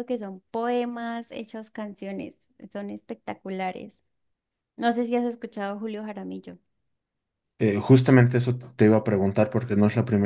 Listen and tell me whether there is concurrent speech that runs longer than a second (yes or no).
no